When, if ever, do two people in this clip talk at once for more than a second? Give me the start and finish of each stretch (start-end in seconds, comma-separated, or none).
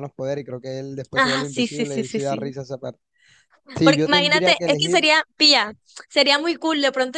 1.2-2.5, 3.8-5.1